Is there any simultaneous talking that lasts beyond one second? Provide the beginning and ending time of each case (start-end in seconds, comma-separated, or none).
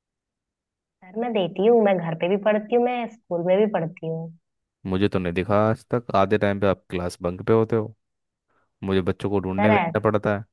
none